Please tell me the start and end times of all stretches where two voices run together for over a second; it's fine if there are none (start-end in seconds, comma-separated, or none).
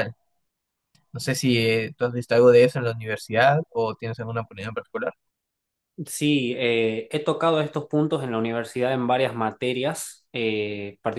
none